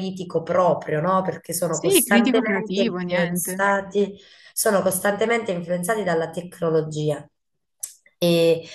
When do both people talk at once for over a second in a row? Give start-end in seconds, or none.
1.7-3.6